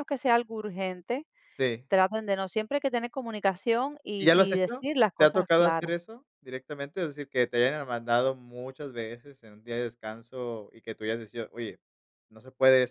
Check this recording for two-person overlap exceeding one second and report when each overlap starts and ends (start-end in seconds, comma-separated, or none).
4.2-5.9